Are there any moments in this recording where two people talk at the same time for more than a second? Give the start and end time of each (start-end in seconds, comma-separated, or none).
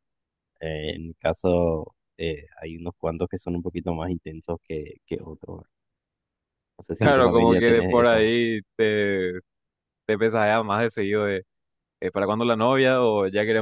7.0-8.3